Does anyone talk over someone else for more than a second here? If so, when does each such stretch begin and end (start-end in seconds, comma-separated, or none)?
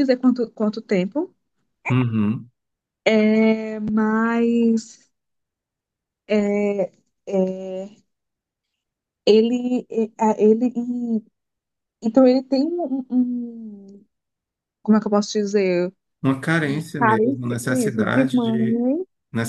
17.0-18.9